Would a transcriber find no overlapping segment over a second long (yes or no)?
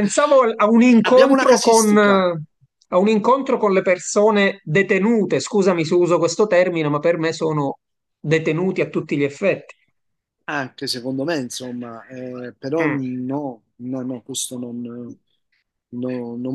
no